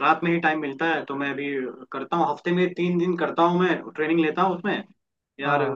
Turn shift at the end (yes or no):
no